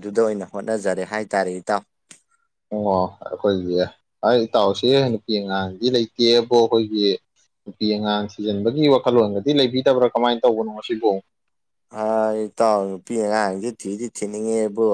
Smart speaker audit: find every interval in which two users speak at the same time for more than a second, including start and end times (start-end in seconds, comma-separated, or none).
none